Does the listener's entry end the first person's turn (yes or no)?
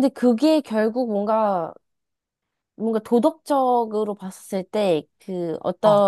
no